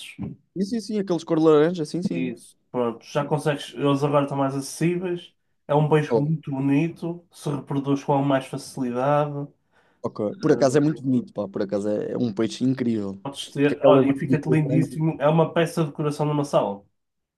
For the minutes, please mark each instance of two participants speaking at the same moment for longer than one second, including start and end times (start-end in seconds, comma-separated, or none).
13.7-15.0